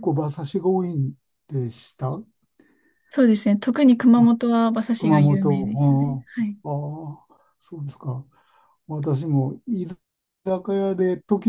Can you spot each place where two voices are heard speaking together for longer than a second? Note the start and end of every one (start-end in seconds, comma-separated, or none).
5.0-6.3